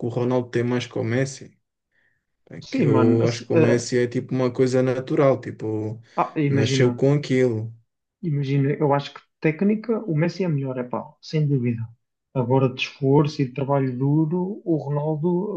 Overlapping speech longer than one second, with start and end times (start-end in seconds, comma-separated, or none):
2.6-3.9